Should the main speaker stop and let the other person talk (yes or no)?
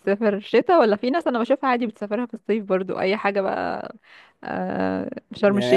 yes